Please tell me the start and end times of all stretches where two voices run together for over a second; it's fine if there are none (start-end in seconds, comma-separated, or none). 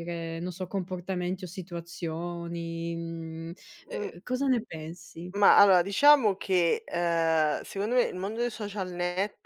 none